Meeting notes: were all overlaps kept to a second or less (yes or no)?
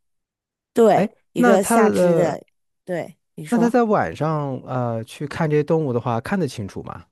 no